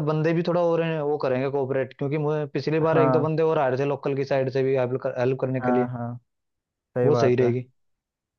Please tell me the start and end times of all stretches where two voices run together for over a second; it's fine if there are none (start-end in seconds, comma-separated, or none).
none